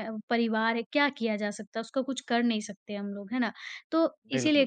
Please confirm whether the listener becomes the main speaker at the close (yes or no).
no